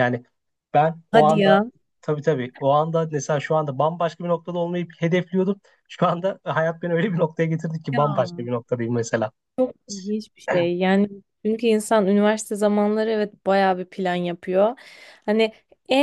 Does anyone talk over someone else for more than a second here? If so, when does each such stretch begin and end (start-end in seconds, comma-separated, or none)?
none